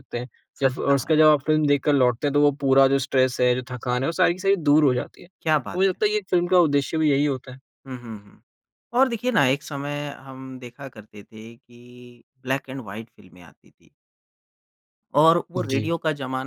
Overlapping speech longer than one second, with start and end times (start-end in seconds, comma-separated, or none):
none